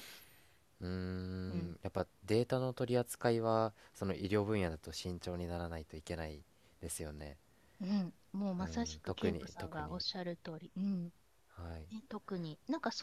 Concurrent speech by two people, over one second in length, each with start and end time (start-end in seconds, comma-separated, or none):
8.6-10.1